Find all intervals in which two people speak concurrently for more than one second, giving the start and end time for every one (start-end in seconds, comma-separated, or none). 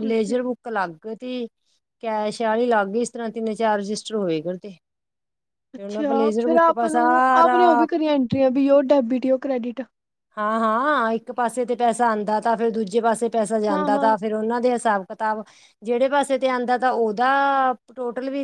5.8-7.6